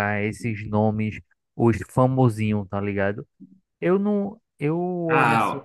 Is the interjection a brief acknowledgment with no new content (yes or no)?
no